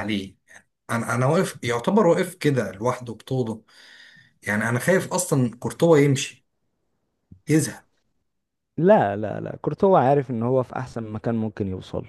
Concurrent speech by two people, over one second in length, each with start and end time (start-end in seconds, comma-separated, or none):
none